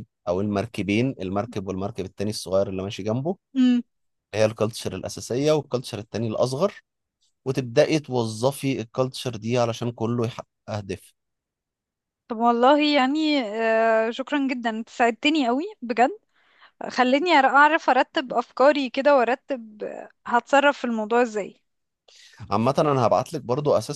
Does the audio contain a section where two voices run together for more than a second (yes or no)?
no